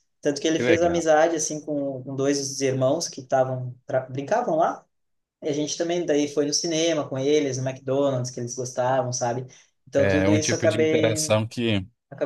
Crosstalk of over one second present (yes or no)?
yes